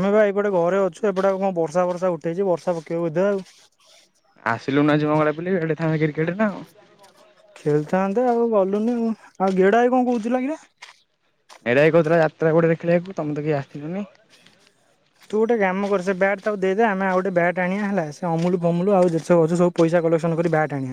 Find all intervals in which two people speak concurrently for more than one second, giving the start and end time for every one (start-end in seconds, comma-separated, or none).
none